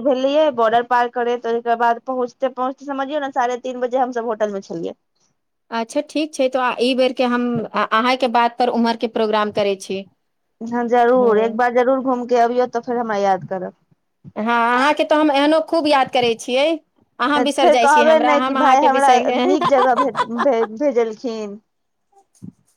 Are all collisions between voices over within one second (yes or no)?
no